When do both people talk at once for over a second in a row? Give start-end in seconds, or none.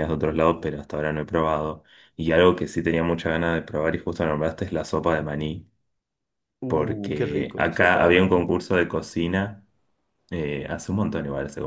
6.7-8.5